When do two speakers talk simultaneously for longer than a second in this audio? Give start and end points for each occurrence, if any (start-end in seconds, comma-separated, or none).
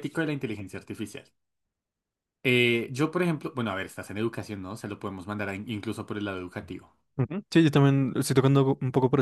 none